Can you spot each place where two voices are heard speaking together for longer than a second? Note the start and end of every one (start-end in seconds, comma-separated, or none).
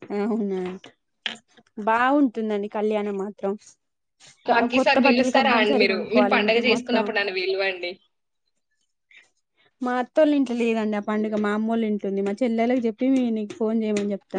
4.5-7.0